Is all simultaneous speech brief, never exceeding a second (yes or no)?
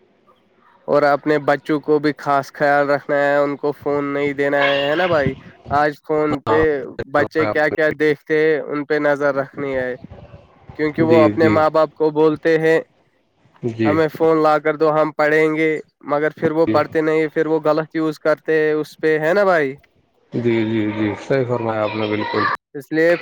yes